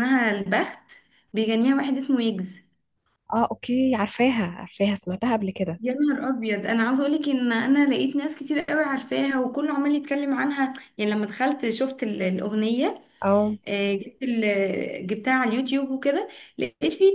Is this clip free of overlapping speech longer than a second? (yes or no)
yes